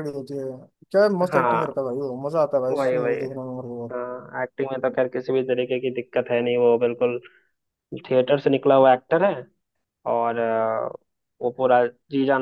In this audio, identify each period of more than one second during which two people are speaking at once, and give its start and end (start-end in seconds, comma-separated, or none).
none